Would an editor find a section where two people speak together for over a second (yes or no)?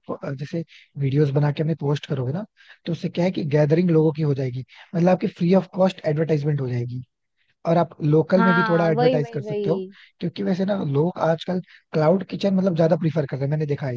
yes